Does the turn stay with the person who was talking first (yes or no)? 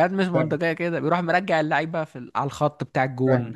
no